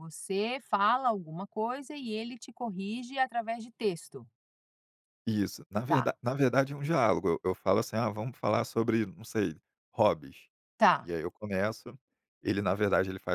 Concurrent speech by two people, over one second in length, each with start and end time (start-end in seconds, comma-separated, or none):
none